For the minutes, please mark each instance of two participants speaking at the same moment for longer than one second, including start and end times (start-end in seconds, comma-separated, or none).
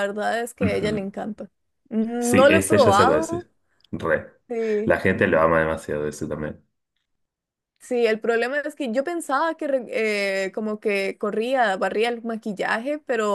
2.2-3.5